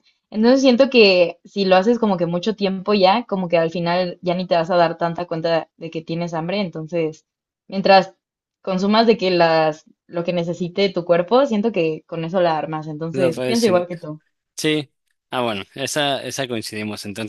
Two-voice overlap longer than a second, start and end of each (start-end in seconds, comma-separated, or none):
none